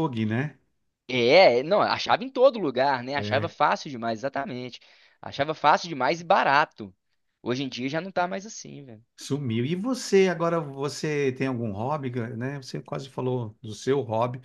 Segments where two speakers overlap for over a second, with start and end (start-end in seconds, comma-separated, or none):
none